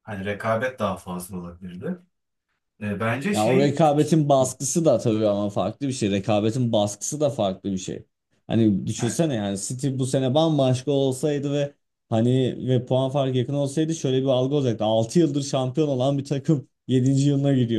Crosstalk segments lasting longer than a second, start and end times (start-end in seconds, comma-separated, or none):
none